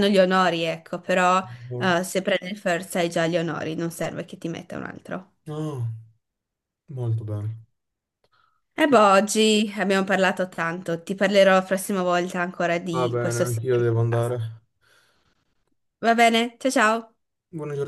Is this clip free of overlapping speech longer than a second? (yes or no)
no